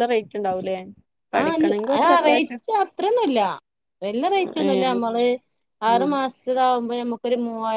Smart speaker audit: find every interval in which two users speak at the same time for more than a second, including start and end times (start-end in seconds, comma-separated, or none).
none